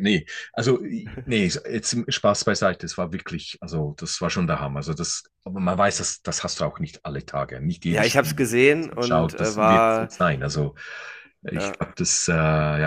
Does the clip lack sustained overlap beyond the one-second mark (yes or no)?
no